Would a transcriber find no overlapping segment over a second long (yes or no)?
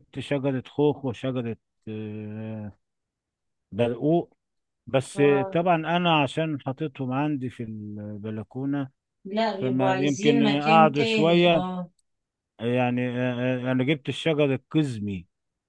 no